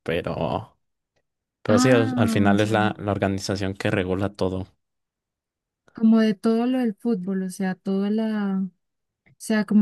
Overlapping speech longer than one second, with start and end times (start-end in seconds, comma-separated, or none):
1.7-2.9